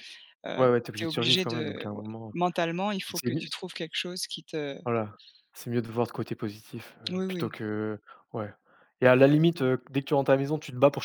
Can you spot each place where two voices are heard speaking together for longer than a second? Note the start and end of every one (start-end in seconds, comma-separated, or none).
0.6-2.3